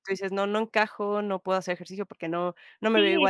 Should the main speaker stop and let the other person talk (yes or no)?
yes